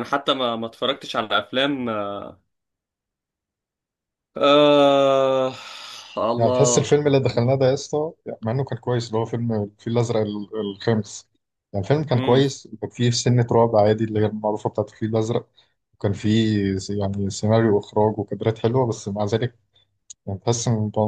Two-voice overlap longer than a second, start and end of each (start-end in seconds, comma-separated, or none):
none